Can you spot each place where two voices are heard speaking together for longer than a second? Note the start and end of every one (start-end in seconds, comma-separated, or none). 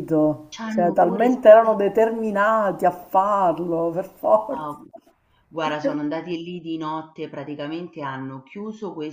0.5-1.8